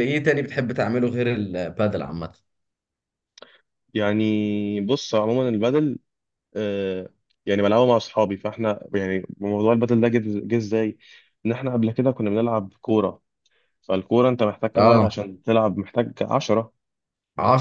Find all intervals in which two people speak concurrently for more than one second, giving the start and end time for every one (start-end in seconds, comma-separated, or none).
none